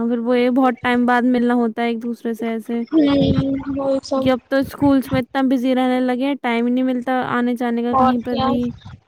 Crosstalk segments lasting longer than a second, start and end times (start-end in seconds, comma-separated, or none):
2.9-4.2